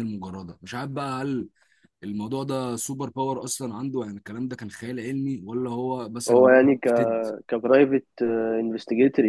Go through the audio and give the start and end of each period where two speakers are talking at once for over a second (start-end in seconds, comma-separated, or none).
none